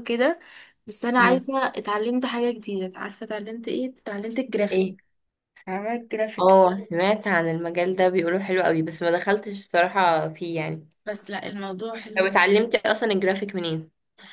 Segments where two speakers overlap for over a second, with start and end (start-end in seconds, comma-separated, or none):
none